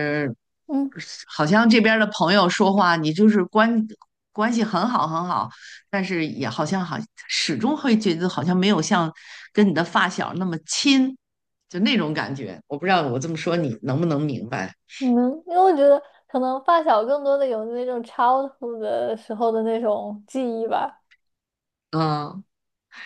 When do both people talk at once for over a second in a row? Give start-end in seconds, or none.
none